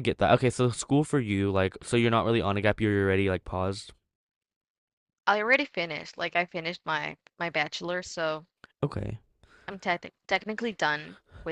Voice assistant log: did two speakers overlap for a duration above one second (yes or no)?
no